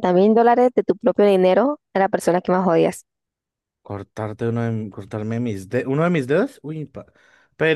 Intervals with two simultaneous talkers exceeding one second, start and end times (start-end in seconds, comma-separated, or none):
none